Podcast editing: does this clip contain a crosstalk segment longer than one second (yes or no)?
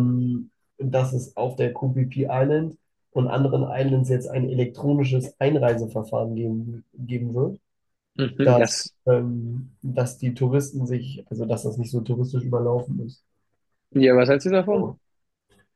no